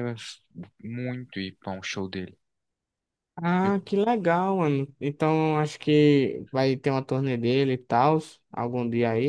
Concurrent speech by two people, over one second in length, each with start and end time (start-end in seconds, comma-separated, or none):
none